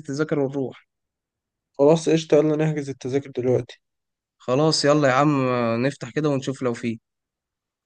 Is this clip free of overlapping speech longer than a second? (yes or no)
yes